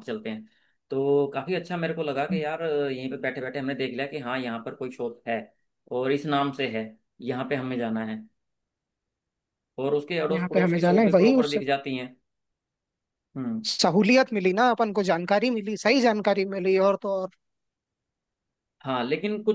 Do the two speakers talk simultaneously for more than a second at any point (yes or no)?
yes